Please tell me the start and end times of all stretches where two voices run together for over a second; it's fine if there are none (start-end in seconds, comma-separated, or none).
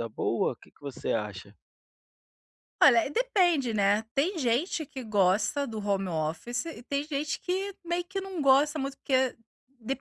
none